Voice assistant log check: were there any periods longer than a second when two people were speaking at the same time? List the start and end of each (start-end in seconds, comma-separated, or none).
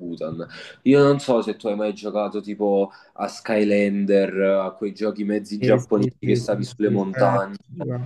5.6-7.3